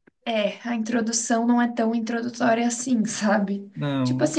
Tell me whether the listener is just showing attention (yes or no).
yes